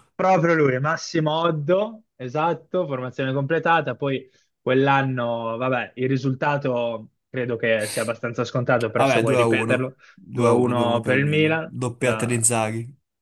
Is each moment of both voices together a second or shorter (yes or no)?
no